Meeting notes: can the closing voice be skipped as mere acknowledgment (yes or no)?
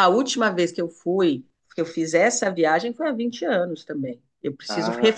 yes